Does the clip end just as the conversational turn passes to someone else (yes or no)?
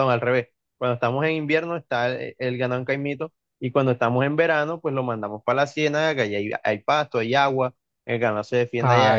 yes